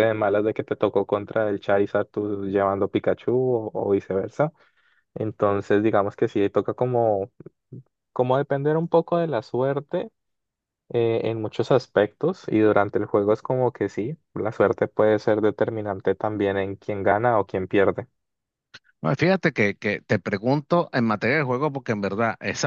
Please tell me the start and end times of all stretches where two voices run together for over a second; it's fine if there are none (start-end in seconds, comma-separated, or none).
none